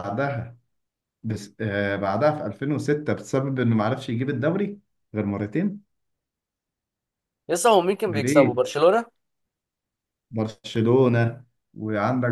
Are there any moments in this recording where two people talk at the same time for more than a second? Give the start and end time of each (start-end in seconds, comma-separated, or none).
none